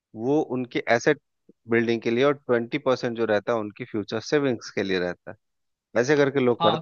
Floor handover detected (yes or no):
yes